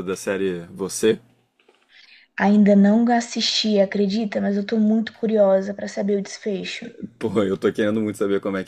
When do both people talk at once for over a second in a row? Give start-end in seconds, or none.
none